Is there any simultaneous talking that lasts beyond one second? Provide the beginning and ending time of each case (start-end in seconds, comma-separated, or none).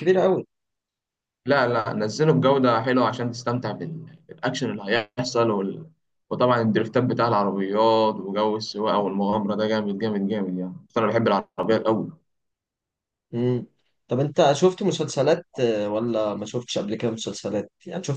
none